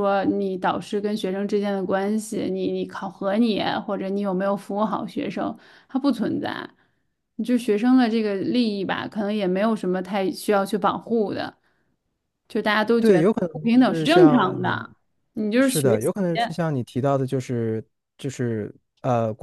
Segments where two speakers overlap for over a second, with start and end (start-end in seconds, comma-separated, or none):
13.0-14.9